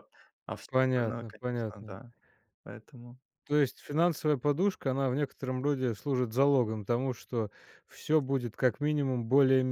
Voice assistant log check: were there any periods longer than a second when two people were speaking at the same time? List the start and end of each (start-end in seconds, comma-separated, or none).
0.7-2.0